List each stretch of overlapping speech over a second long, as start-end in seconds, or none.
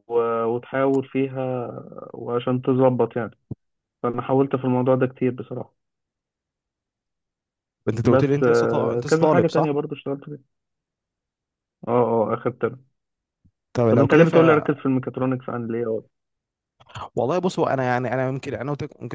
8.0-9.7